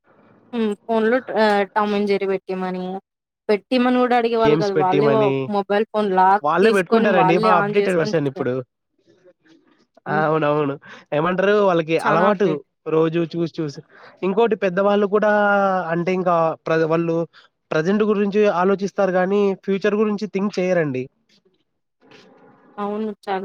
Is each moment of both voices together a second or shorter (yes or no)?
no